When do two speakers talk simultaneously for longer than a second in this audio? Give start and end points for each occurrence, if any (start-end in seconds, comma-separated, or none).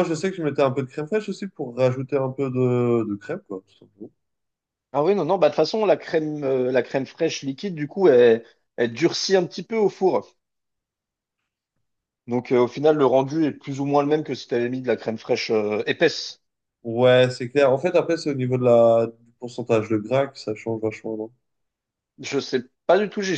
none